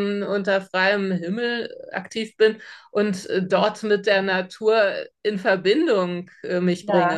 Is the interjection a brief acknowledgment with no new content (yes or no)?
no